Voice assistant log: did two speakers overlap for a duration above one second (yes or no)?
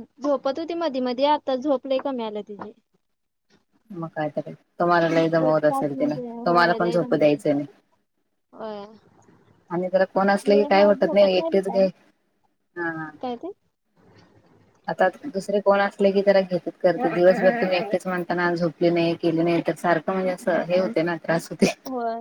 yes